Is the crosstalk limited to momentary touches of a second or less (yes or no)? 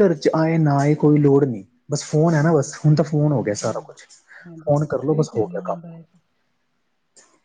no